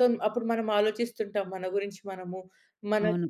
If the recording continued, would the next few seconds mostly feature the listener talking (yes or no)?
no